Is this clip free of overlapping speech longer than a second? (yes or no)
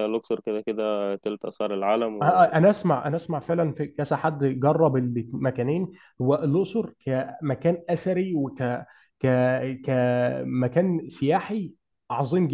yes